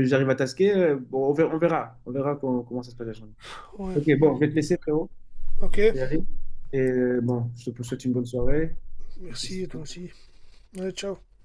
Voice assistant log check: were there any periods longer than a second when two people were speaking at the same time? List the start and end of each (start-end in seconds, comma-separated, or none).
none